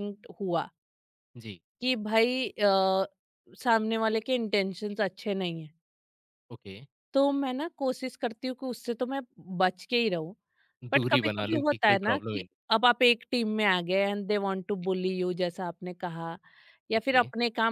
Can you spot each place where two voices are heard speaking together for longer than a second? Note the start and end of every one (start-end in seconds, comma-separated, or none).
11.0-12.6